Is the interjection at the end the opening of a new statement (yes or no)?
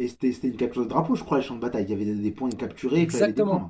yes